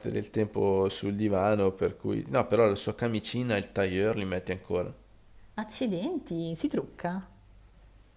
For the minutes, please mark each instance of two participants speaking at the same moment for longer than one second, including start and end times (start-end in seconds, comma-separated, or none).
none